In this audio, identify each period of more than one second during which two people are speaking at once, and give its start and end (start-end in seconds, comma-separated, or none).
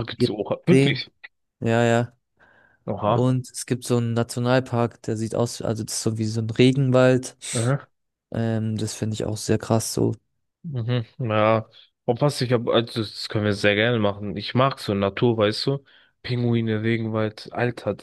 none